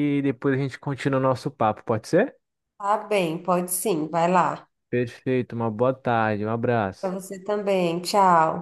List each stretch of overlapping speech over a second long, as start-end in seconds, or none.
none